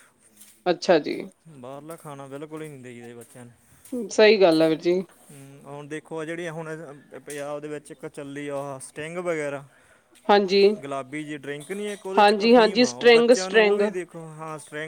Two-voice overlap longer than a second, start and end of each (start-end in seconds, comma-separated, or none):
12.2-13.8